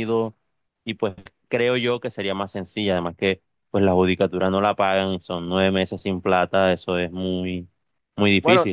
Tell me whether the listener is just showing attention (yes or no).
no